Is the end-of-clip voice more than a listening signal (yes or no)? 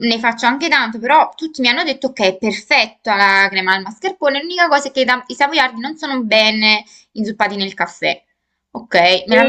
yes